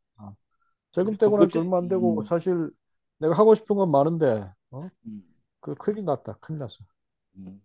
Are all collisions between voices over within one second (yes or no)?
no